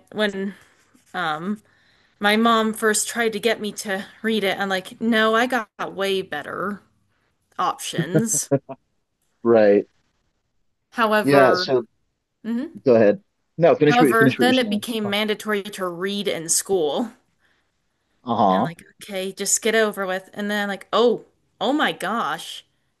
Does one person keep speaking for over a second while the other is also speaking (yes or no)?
yes